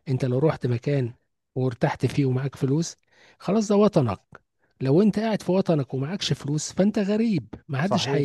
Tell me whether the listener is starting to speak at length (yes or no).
yes